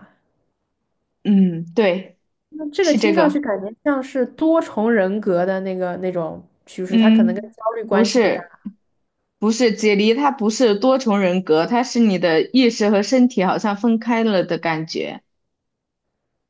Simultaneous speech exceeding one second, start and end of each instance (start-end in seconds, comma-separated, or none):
6.9-8.4